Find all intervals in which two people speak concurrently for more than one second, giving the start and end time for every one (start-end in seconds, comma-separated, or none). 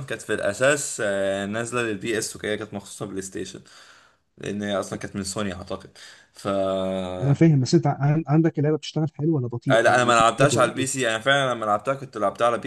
9.7-11.0